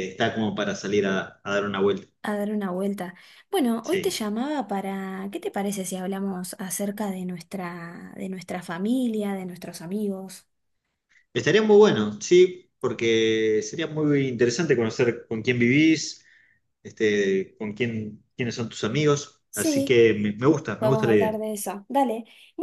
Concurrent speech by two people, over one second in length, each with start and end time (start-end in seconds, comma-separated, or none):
none